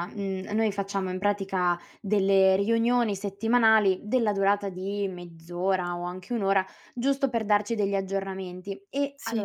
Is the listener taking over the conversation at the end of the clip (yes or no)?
no